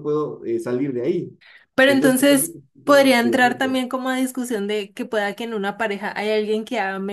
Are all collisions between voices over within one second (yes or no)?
no